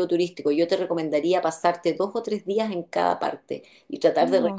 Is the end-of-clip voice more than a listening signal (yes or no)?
no